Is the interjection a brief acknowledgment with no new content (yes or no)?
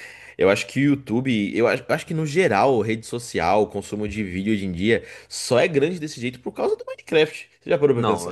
no